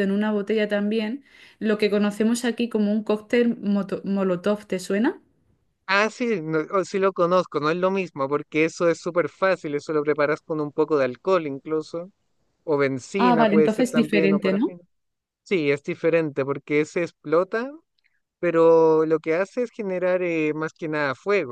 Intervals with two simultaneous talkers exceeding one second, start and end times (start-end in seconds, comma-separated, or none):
13.2-14.7